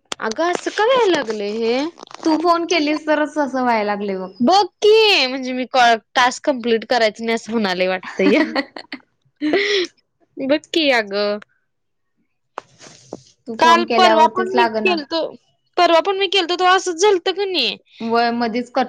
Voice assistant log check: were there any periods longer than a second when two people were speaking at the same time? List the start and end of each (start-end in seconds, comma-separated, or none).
13.6-14.9